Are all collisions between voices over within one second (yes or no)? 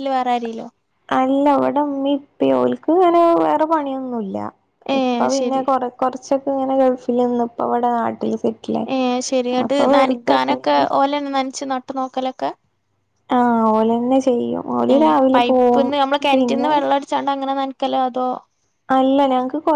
yes